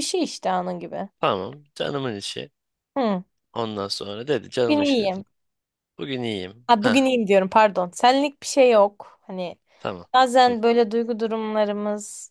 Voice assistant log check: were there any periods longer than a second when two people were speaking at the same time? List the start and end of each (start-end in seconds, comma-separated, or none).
none